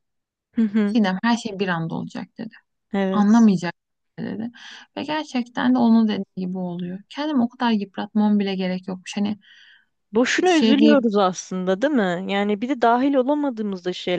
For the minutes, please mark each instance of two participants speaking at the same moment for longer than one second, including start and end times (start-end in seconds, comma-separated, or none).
none